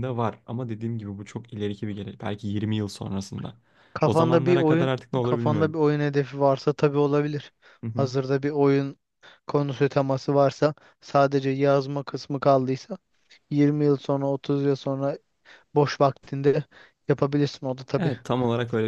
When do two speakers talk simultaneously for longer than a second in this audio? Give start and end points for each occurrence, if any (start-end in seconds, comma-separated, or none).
4.0-5.8